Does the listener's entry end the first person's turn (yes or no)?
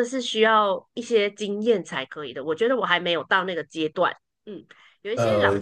no